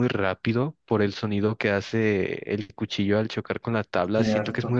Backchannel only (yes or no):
yes